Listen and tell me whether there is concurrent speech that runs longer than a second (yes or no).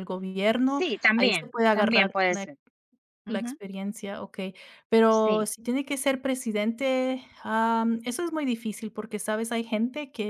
yes